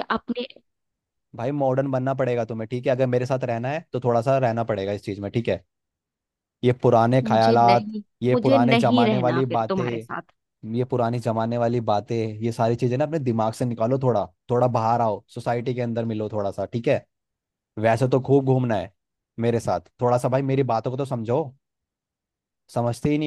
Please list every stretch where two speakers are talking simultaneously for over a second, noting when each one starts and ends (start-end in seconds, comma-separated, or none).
7.3-10.1